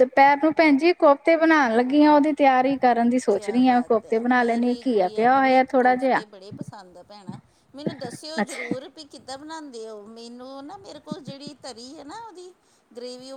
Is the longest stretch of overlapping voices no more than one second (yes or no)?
no